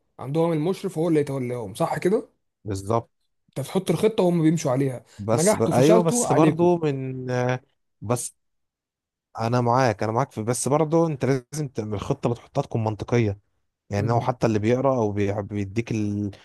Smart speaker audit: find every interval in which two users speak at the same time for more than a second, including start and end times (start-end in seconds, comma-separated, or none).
5.2-6.7